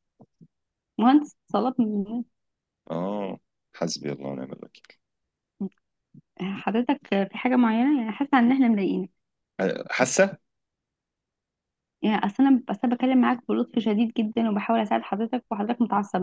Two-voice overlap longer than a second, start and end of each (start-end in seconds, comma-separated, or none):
none